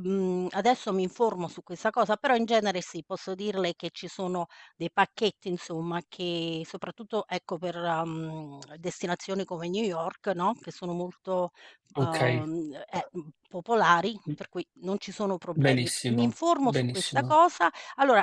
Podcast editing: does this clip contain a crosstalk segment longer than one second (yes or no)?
yes